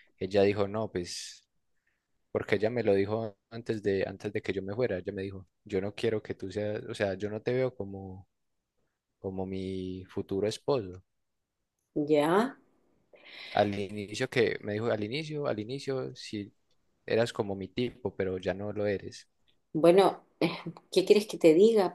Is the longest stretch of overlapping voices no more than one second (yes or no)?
yes